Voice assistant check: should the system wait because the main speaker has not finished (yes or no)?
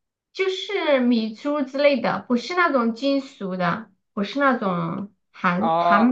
no